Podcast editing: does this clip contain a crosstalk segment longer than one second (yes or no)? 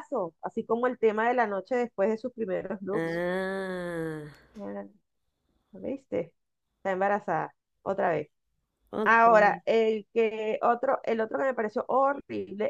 no